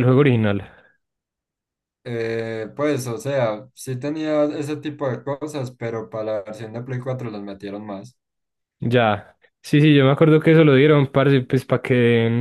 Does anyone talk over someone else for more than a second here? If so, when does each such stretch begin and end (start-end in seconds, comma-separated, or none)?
none